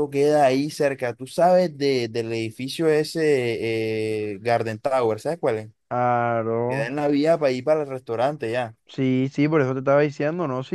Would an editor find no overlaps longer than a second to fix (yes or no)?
yes